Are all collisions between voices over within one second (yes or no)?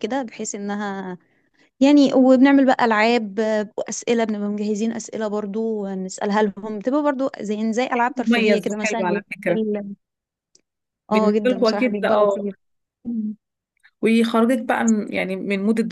no